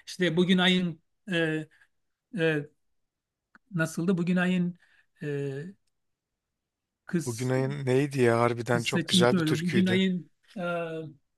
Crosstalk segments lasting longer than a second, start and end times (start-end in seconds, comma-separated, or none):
8.7-10.0